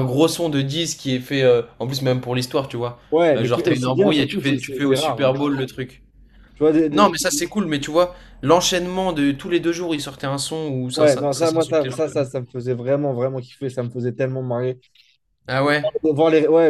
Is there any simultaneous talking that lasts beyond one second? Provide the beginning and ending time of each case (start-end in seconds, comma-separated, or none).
3.4-5.4, 11.0-12.3